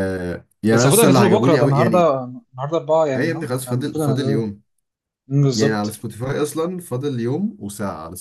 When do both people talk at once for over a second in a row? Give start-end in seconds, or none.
0.7-2.1, 3.1-4.4